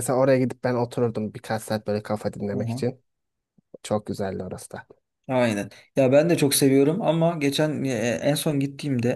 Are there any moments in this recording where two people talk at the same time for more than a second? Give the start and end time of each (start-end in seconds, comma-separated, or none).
none